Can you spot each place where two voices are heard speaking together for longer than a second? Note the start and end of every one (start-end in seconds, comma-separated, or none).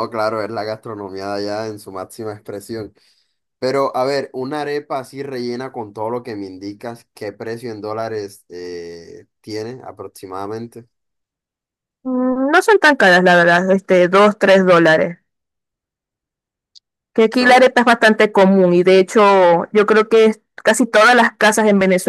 none